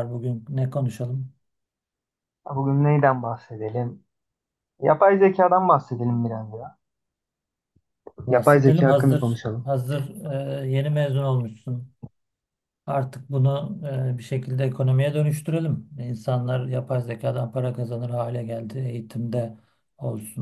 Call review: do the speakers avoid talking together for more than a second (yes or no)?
no